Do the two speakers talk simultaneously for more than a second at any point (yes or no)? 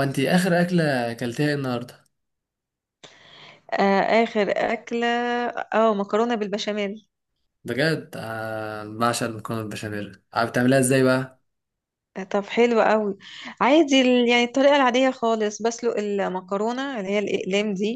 no